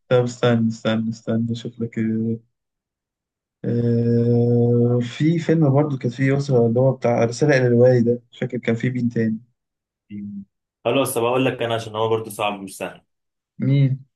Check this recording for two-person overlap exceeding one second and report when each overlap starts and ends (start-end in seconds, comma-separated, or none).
none